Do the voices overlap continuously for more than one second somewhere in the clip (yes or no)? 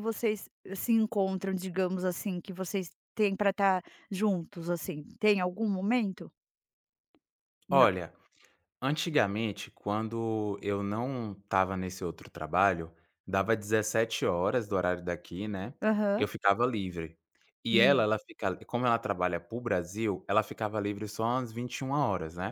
no